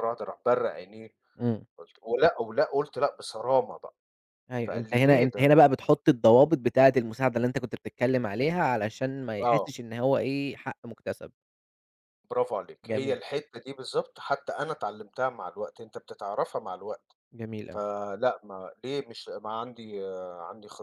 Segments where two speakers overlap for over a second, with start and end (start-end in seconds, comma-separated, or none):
4.6-6.0